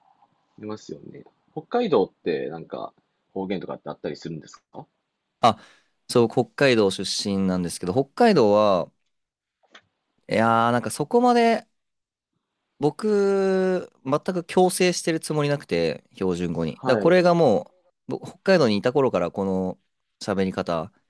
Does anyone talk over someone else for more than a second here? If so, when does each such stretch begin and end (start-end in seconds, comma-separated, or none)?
none